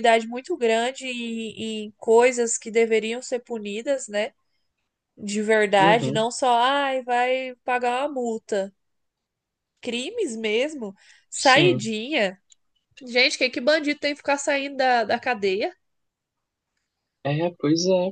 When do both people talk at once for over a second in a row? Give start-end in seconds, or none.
none